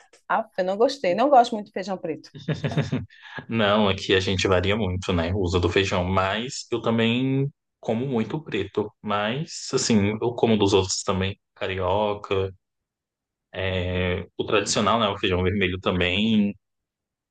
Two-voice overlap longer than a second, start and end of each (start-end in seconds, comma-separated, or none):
none